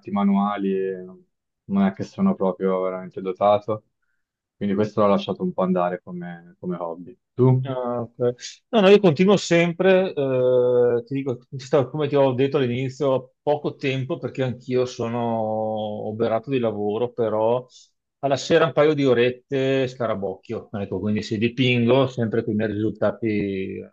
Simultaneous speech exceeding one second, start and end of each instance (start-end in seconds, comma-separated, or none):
none